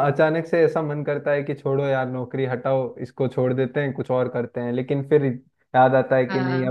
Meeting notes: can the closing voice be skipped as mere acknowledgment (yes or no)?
yes